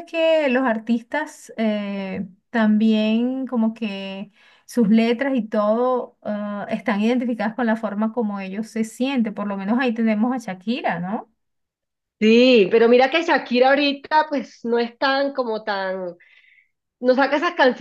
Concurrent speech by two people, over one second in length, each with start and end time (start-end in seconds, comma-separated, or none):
none